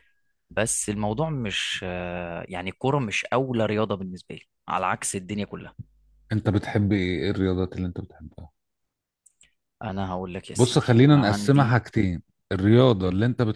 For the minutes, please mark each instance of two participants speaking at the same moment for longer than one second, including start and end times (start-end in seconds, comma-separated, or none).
10.6-11.8